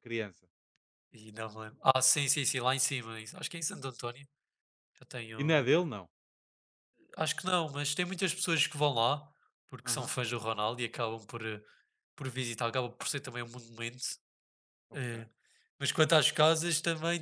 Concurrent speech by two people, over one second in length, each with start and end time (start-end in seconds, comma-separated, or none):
none